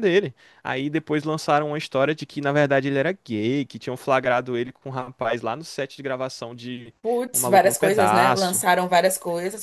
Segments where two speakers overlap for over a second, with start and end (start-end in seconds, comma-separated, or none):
7.3-8.6